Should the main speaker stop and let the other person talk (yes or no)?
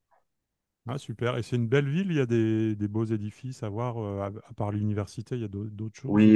yes